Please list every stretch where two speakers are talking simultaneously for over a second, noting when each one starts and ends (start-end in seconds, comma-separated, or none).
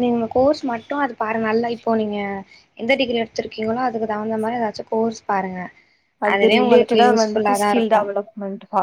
6.3-8.0